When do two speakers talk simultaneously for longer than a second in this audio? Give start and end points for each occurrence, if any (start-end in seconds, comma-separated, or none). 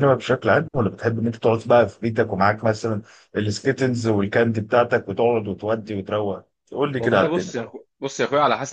none